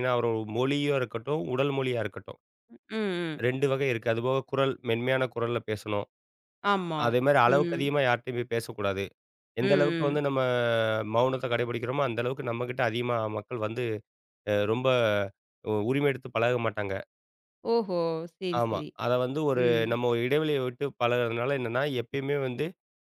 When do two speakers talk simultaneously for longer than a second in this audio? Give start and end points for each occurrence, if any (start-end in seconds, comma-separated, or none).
none